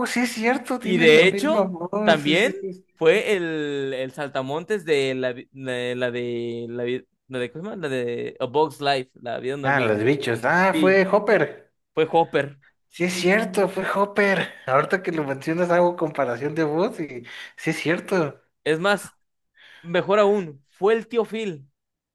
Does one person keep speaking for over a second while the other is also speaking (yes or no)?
yes